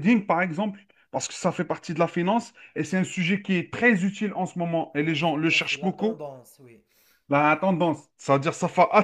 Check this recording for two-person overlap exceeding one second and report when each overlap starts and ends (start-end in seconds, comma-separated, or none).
5.0-6.2